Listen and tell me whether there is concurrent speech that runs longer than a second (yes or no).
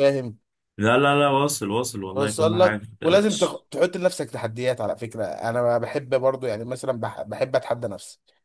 yes